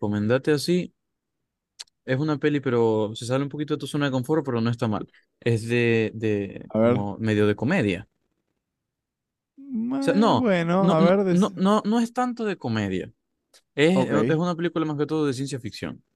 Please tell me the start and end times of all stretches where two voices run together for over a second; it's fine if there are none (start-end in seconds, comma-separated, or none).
9.8-11.5